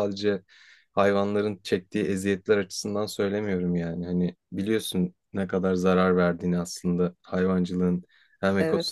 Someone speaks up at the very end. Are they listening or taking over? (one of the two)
listening